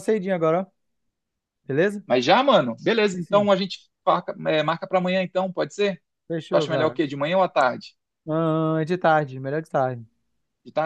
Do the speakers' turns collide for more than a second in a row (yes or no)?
no